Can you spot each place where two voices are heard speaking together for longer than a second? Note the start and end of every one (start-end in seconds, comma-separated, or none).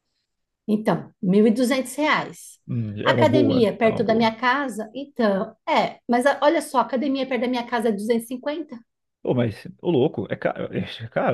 3.0-4.3